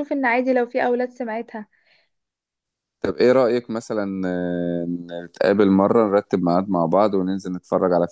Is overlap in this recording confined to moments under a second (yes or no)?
yes